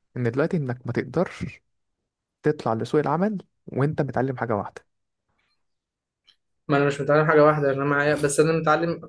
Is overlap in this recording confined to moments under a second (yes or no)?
yes